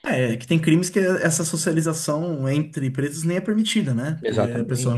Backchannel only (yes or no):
yes